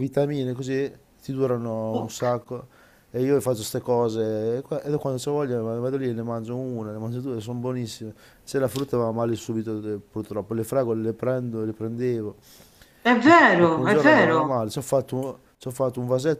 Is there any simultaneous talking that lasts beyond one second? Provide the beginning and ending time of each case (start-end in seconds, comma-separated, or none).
13.2-14.5